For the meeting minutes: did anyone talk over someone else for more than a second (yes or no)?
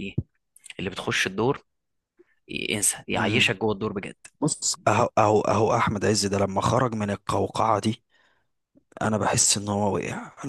no